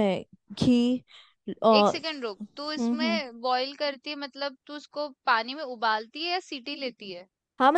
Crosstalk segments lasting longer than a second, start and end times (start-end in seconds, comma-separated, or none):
none